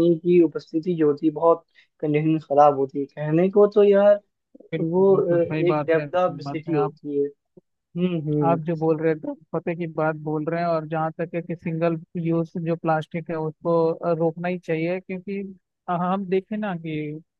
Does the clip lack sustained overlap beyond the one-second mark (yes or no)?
no